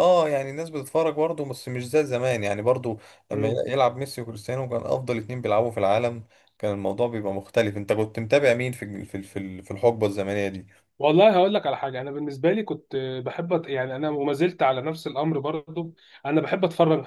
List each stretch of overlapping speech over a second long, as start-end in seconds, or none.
none